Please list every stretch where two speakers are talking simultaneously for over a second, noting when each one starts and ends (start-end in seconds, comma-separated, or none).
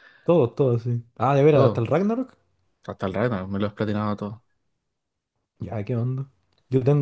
none